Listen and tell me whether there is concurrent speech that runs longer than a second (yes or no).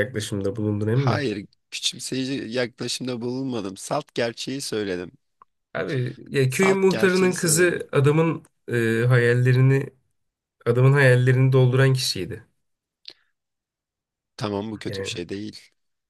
yes